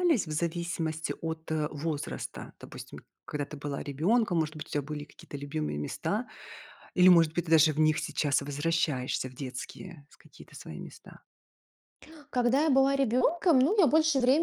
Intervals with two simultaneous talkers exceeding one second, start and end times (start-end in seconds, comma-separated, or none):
none